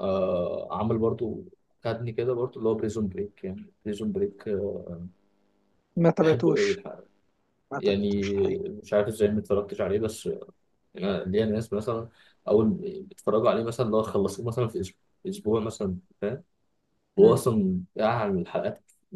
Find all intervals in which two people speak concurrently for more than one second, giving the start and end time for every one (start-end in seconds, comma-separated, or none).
none